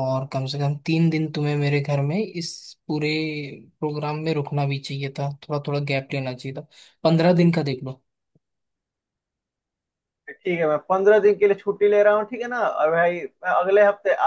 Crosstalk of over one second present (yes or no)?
no